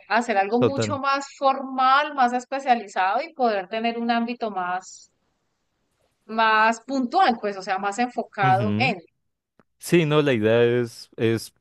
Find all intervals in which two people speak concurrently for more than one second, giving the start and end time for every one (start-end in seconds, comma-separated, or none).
none